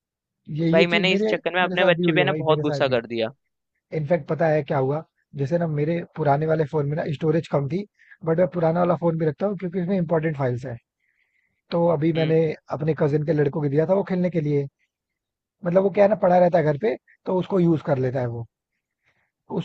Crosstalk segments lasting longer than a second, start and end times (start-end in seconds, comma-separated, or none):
0.7-3.0